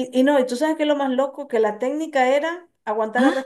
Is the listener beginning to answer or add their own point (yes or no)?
no